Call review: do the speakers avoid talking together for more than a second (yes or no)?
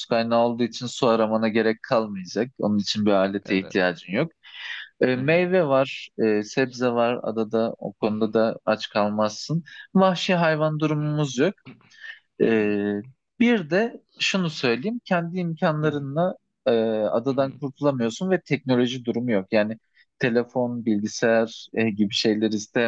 yes